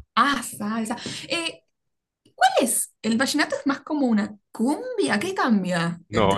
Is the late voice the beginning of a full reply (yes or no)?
yes